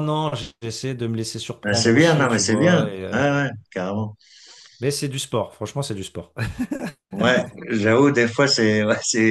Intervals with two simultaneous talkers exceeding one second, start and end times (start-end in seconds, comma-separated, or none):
1.6-3.2